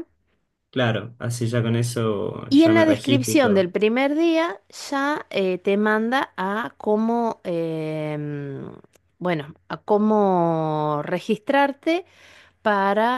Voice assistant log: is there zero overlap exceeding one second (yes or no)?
no